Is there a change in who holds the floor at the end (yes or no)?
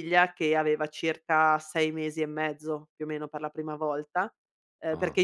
no